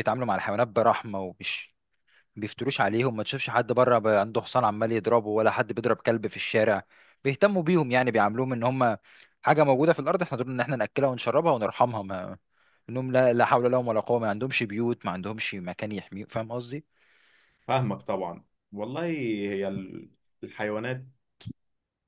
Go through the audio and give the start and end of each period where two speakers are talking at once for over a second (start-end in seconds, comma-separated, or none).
none